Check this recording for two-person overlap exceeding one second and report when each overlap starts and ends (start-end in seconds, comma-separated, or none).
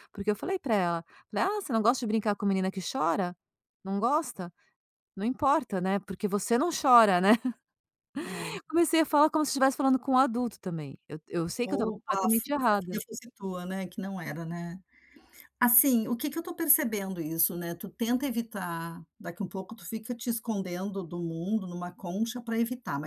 11.6-13.0